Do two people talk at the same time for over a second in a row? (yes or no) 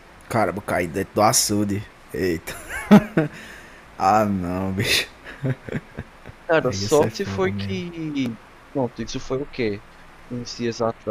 yes